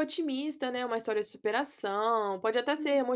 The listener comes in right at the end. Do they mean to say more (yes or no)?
no